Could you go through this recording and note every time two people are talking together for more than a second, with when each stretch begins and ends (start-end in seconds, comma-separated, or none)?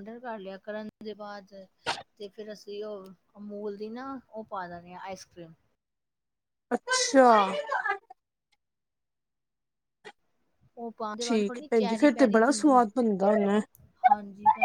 11.2-12.8